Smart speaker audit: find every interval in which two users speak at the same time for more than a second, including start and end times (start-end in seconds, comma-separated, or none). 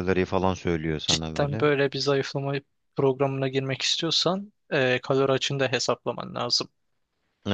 none